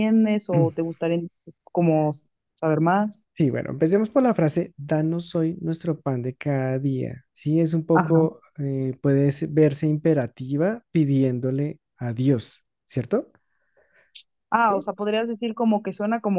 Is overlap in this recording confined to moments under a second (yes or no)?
yes